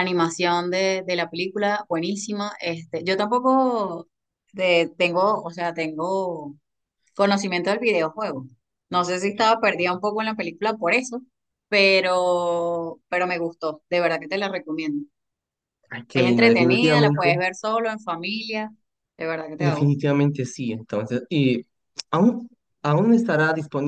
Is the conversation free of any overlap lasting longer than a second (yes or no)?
no